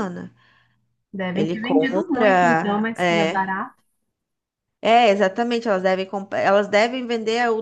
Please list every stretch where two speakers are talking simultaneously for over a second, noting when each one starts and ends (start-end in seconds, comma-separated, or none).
1.3-3.5